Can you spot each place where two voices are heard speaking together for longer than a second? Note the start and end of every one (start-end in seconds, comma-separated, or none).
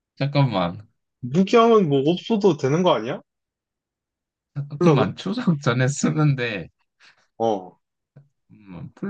none